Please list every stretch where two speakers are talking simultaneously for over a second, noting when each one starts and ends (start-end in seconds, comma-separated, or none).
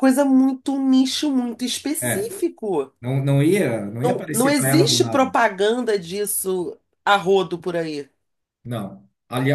4.0-5.3